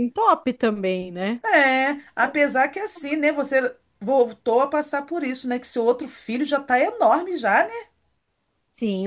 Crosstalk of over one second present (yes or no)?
no